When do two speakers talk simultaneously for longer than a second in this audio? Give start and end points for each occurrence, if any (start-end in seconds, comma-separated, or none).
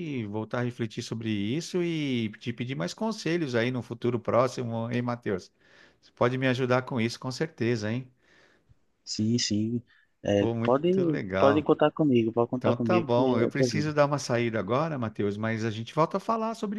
10.4-11.7, 12.6-13.9